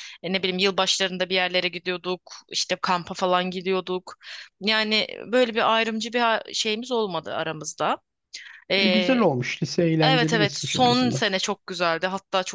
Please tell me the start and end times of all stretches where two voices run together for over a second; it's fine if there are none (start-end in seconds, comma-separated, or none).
10.0-11.2